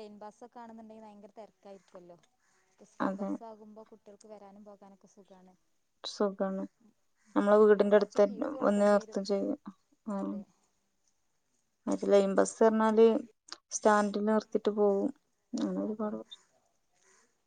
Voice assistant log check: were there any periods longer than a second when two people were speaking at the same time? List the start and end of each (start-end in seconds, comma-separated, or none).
7.7-9.2